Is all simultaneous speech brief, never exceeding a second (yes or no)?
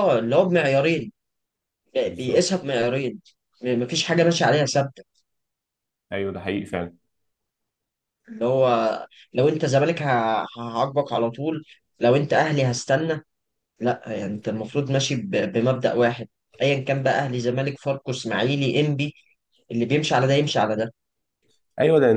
yes